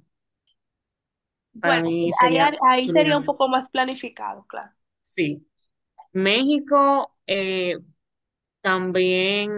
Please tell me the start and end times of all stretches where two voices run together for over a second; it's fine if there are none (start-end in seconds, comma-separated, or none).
1.6-3.4